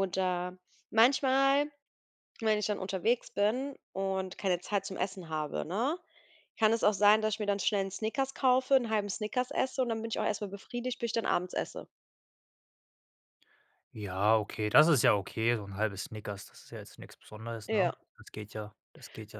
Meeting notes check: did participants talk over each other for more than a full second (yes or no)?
no